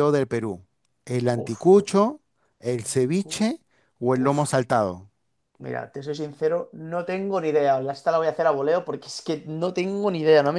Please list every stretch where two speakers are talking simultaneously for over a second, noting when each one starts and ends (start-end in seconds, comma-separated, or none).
none